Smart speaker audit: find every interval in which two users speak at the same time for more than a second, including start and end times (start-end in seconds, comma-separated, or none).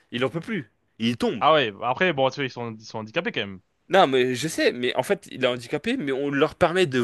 none